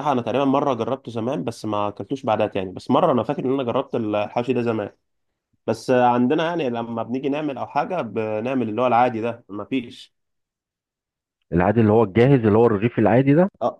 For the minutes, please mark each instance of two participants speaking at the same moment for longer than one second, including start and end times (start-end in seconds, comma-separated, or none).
none